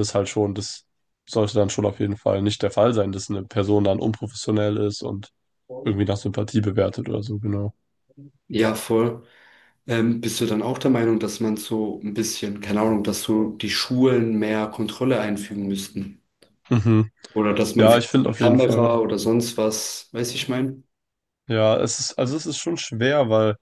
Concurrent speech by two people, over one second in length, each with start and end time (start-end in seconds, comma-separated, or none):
17.8-18.9